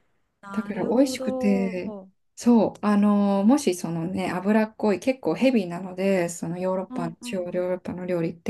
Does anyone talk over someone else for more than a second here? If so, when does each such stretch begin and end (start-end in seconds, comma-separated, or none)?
0.5-1.8